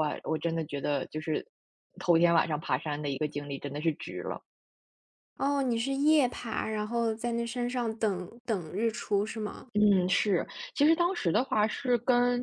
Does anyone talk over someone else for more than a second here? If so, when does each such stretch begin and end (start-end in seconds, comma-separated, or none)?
none